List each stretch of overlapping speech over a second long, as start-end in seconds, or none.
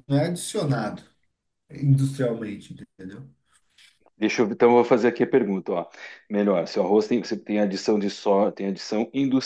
none